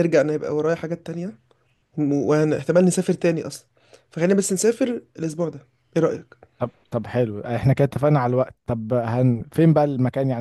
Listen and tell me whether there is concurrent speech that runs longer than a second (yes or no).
no